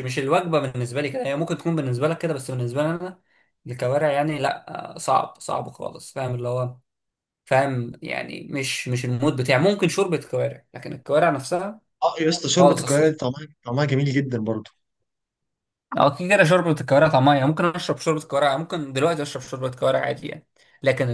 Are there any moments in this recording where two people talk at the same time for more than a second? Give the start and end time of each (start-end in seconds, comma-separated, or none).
none